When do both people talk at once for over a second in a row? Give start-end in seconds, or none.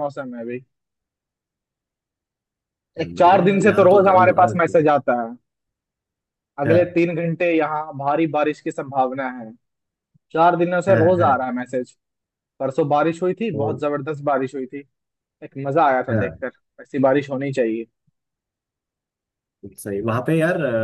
3.1-4.7